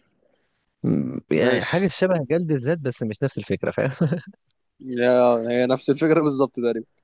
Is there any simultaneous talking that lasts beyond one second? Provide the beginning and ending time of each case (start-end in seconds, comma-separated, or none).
none